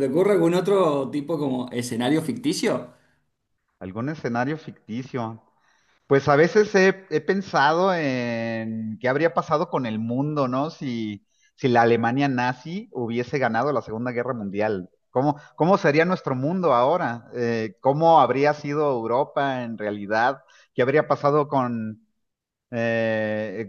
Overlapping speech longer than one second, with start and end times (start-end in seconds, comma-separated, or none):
none